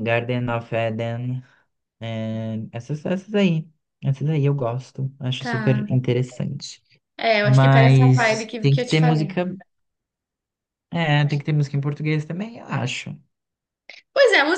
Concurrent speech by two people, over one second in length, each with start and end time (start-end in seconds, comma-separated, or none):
7.4-9.4